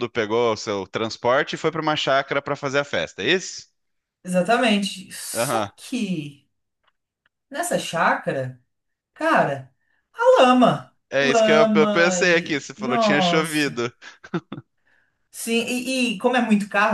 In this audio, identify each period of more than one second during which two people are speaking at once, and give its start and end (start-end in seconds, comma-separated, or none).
11.1-13.8